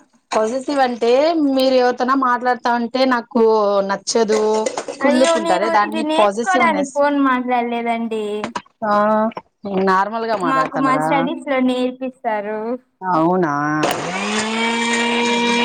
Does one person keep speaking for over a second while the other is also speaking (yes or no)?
yes